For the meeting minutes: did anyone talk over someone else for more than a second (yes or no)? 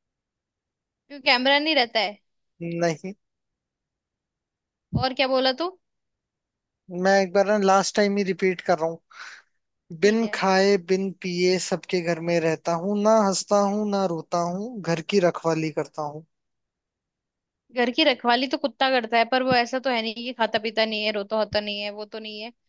no